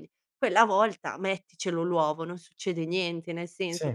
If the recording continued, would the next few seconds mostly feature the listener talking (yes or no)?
no